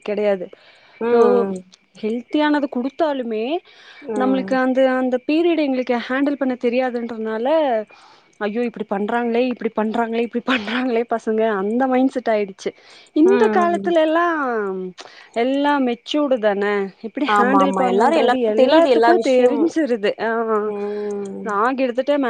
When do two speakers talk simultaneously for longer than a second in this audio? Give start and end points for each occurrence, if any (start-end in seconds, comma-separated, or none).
17.4-19.6